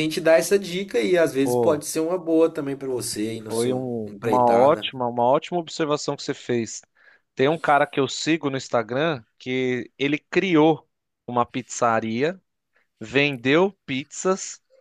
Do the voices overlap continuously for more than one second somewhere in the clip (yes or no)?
yes